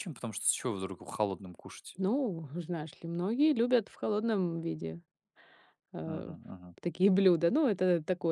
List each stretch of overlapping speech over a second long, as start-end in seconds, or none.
none